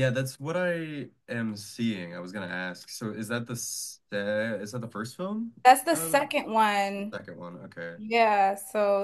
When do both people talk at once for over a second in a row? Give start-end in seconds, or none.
none